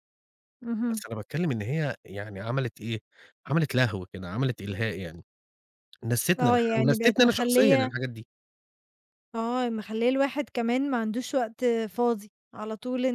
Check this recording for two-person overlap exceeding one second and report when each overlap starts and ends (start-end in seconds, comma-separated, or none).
6.4-7.9